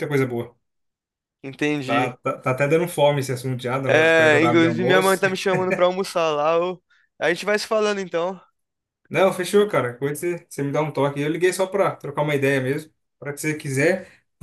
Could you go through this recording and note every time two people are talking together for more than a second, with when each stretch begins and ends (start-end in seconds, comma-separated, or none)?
3.9-5.2